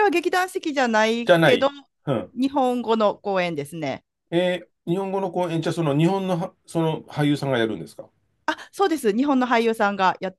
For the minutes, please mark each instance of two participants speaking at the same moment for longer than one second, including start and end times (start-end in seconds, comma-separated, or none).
none